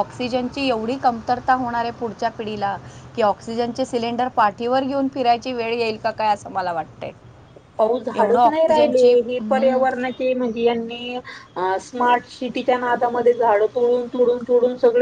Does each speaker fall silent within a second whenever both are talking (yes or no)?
no